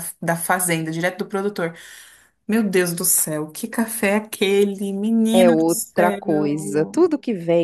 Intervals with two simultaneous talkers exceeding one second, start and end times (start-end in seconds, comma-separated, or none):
5.3-7.0